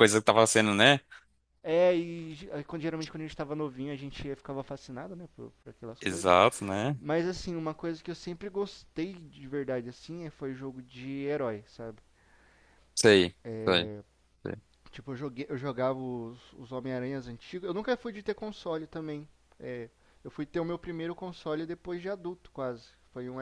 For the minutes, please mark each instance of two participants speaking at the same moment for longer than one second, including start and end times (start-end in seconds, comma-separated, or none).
none